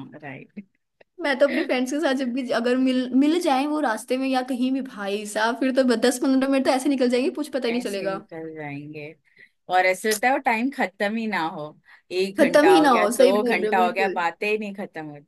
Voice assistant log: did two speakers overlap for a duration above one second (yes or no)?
yes